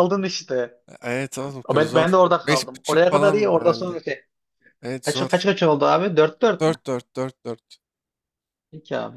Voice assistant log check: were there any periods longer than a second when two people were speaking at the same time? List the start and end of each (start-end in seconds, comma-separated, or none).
1.7-4.0